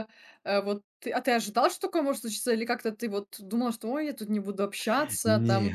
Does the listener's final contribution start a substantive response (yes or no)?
no